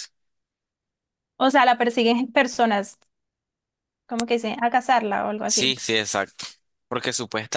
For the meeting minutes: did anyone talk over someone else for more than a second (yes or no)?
no